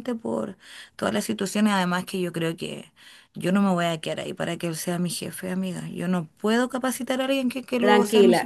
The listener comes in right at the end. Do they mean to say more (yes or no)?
yes